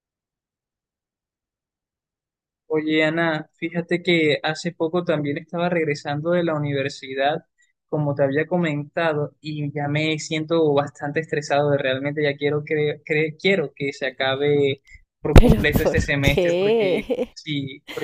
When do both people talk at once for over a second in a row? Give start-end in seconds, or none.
15.3-17.4